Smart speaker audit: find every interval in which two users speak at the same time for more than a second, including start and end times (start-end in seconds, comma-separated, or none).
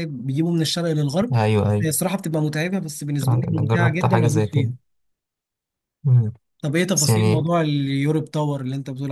3.3-4.7